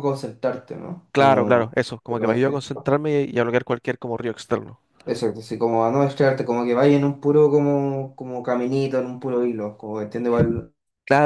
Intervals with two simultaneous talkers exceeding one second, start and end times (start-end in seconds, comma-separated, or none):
1.1-2.6